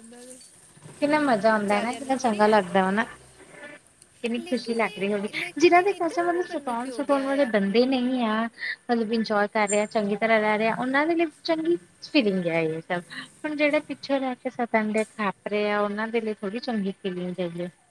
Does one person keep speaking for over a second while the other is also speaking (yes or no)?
yes